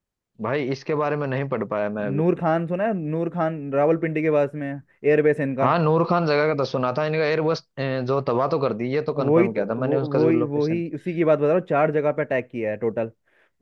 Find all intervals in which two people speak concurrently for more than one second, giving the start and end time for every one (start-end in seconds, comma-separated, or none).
9.2-10.8